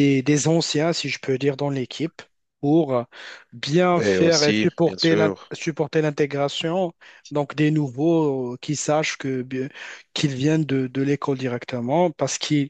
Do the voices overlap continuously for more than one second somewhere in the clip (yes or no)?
yes